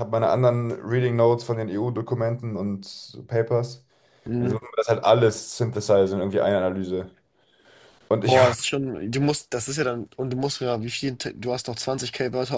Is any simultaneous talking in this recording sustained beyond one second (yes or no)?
no